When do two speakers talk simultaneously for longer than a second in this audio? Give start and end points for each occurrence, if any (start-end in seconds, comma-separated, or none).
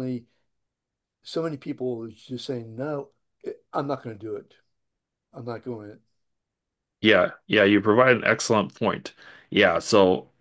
none